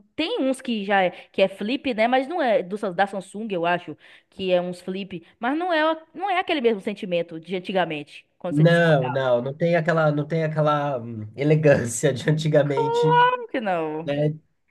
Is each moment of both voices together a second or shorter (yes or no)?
yes